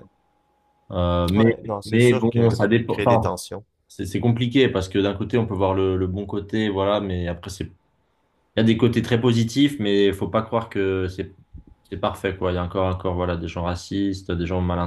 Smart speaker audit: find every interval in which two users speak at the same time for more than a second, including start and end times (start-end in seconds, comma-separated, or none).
1.3-3.3